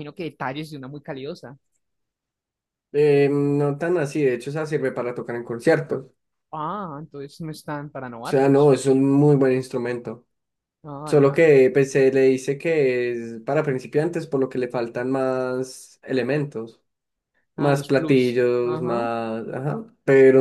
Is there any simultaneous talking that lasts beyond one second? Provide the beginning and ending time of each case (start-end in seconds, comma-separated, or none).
17.6-19.1